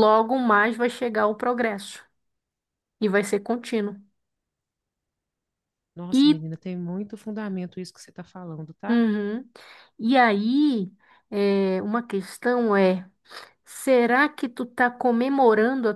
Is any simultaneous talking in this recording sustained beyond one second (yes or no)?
no